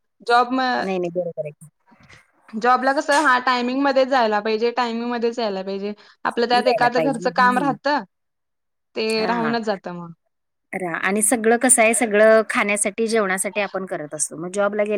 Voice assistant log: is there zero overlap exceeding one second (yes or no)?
no